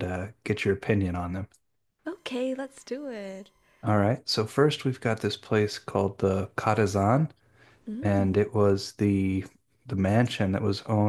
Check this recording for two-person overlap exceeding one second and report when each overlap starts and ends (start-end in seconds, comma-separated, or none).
none